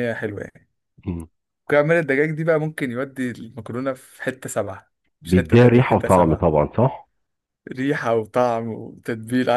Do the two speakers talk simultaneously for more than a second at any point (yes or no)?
yes